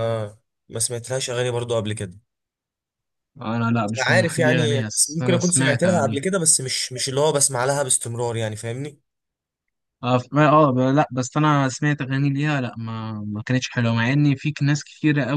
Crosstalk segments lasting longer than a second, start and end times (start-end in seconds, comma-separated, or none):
4.0-6.2